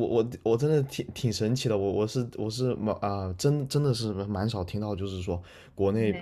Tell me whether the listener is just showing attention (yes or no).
yes